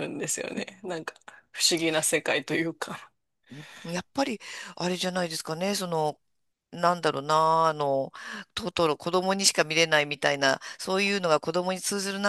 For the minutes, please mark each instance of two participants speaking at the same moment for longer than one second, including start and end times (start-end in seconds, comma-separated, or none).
none